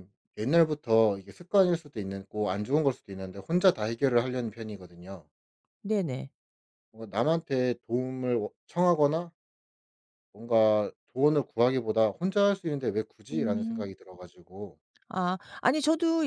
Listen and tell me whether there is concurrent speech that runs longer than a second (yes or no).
no